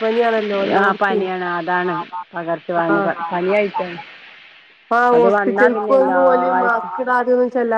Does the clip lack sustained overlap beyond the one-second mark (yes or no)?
no